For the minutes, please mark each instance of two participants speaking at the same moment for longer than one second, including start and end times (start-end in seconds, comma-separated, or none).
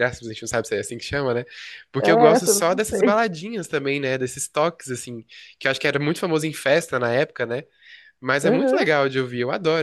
2.0-3.2